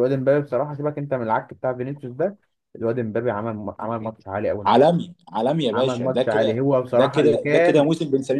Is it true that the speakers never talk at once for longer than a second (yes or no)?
no